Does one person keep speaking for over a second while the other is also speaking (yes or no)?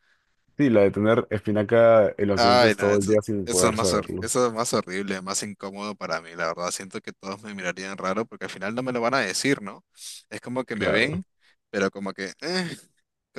yes